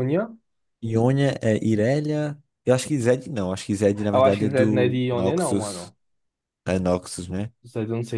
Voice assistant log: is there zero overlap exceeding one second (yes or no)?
no